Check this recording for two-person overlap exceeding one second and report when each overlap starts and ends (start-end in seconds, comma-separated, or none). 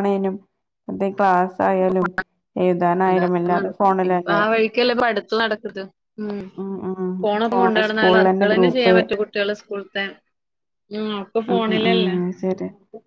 7.2-8.9